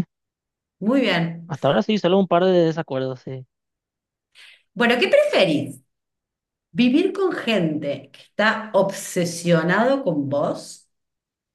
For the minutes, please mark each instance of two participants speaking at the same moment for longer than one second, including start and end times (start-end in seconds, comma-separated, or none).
none